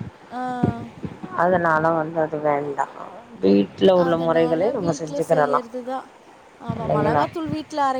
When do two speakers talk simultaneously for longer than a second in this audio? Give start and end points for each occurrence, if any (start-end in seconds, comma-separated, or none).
4.1-5.6